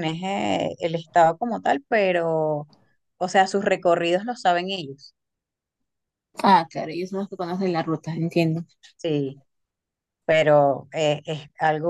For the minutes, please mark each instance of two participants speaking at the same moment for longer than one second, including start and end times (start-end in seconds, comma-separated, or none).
none